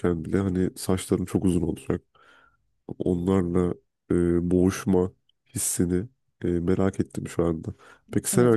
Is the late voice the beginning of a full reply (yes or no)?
yes